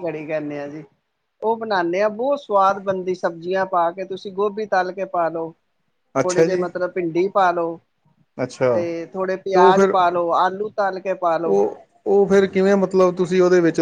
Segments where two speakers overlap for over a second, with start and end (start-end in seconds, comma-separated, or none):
none